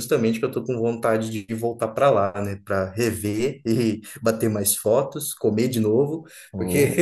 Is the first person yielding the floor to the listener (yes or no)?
no